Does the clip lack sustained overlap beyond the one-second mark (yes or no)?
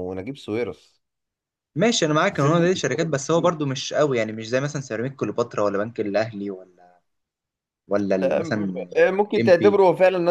no